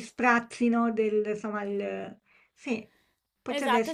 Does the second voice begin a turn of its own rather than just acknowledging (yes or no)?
yes